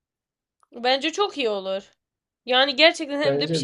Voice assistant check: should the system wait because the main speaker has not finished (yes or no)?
yes